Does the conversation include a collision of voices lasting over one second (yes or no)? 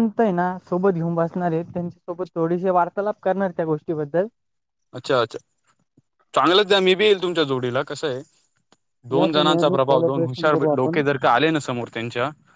yes